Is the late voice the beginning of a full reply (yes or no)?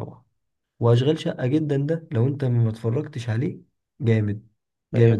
yes